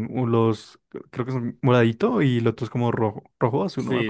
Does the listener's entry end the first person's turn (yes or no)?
yes